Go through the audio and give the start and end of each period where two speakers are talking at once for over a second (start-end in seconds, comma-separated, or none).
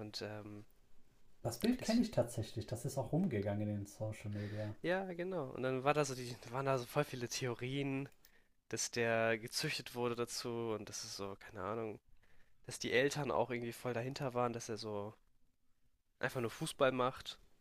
none